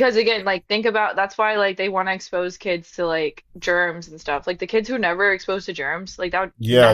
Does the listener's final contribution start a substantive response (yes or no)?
yes